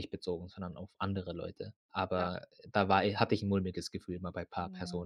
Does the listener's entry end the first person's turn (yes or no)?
yes